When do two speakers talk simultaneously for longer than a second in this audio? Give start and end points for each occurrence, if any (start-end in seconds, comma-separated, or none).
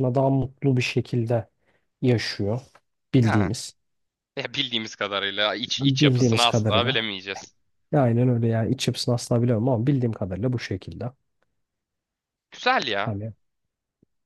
5.8-7.1